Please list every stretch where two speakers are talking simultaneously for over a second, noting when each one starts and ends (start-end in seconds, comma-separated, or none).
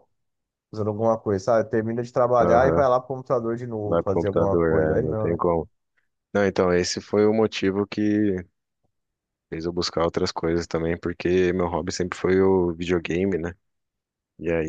3.9-5.4